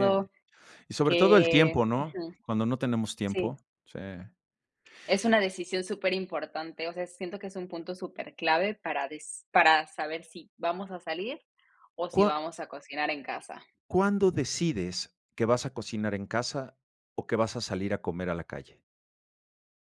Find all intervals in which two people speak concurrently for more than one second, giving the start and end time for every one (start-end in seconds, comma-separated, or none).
1.0-2.3